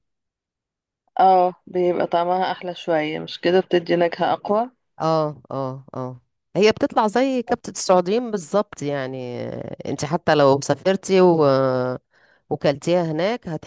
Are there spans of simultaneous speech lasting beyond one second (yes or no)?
no